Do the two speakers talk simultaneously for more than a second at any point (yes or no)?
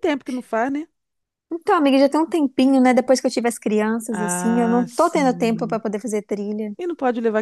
yes